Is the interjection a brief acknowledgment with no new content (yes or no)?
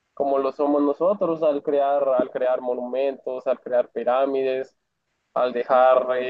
yes